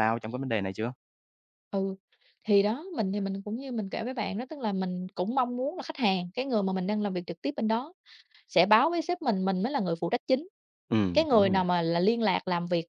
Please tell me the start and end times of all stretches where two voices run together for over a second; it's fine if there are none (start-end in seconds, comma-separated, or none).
none